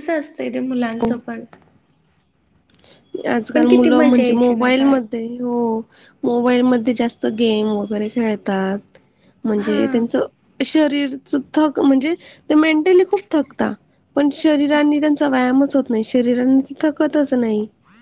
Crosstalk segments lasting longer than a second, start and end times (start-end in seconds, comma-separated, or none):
3.5-5.2